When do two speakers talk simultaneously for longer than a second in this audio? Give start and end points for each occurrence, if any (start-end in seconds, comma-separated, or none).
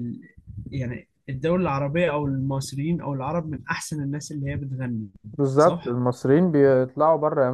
none